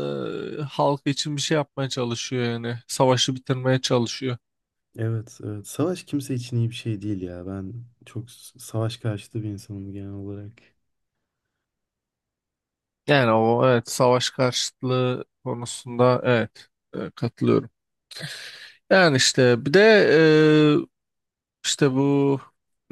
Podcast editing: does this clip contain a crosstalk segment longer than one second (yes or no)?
no